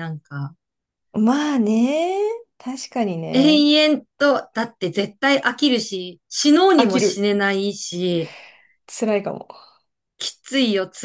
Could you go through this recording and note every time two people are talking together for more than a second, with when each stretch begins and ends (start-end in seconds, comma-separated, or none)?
none